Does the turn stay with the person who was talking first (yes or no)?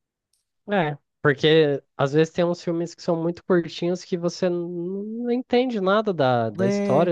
yes